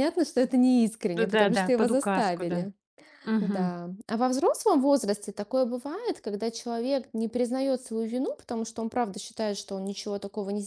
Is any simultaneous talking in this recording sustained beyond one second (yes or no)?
yes